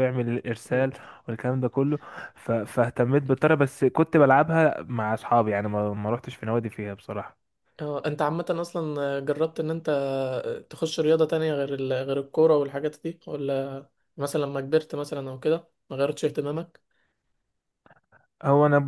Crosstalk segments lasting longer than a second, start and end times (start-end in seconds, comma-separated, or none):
none